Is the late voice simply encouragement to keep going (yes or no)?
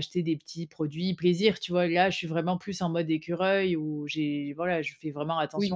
no